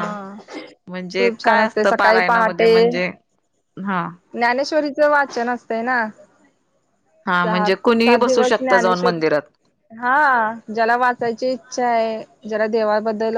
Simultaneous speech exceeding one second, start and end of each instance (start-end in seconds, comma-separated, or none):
1.2-2.7, 7.4-9.2